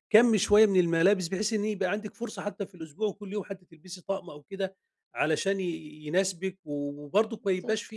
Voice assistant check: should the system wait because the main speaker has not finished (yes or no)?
yes